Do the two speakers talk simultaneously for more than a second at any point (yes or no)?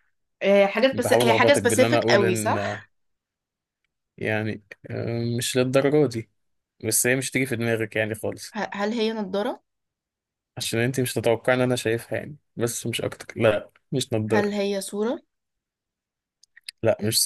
yes